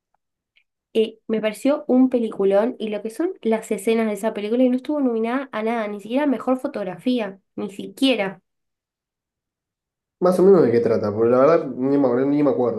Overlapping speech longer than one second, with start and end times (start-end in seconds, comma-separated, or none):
none